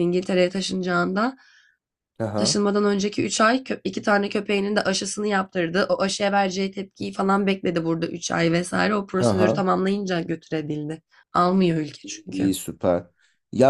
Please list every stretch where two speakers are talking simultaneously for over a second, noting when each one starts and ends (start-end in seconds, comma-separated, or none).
none